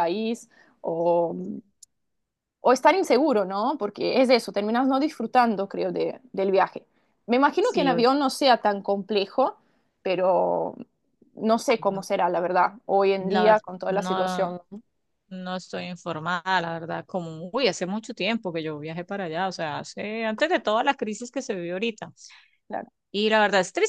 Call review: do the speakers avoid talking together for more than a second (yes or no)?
no